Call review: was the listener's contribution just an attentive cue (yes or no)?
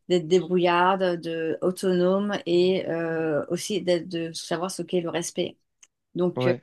yes